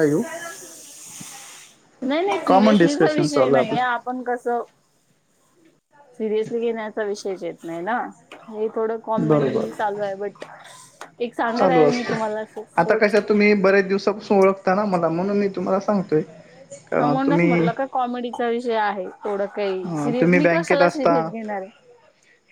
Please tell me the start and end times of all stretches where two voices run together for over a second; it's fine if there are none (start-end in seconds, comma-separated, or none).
2.5-4.0, 19.7-21.1